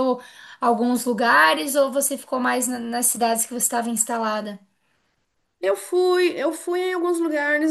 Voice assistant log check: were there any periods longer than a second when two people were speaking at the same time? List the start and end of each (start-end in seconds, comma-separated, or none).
none